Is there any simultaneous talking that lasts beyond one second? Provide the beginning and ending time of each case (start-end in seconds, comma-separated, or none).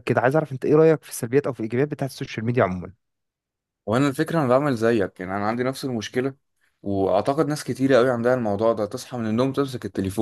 none